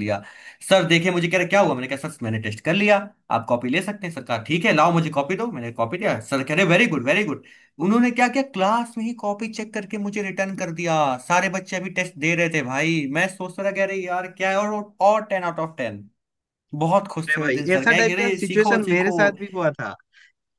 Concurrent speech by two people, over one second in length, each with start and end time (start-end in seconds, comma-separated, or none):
17.3-19.1